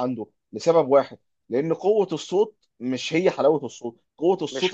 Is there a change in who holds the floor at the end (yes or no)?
no